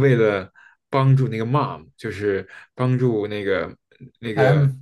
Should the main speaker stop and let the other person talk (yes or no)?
no